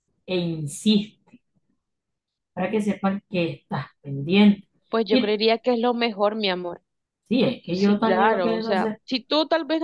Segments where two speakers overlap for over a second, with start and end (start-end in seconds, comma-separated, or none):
7.7-9.0